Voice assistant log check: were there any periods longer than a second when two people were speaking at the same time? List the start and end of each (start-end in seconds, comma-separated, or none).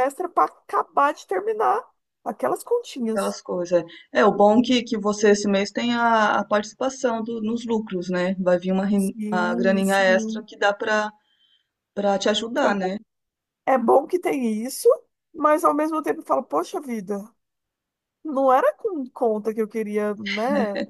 8.9-10.5